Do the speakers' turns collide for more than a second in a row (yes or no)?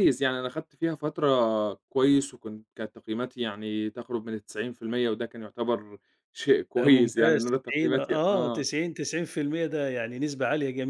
yes